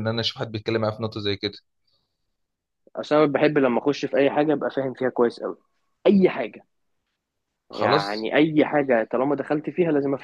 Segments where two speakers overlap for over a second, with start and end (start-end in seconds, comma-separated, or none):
none